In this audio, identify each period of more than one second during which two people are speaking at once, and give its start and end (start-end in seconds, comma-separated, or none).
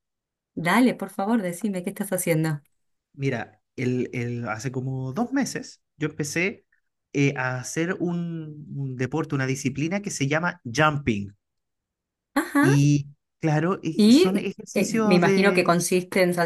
13.9-15.8